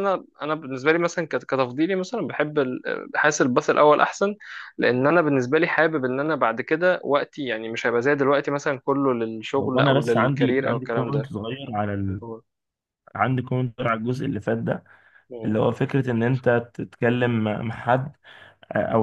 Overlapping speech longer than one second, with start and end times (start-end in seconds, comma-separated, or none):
9.6-11.3